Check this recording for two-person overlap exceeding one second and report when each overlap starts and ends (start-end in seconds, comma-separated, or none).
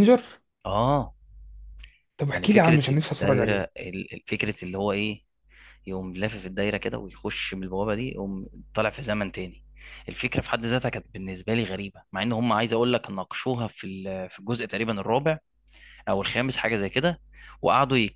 2.3-3.7